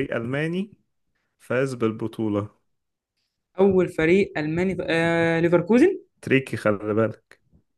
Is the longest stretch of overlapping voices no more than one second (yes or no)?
yes